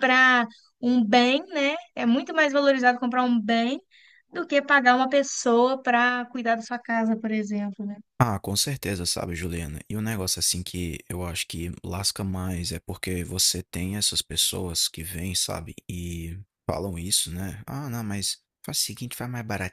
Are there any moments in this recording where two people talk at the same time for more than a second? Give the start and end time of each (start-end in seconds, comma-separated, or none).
none